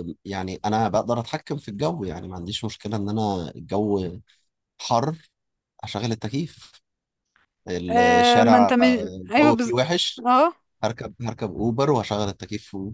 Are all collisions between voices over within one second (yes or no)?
no